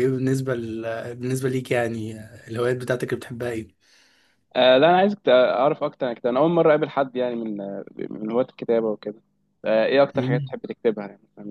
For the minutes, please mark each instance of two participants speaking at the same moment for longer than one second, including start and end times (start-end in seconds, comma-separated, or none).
none